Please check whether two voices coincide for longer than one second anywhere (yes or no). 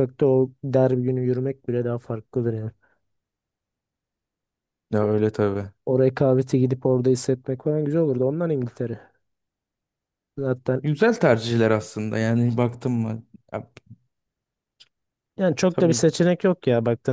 no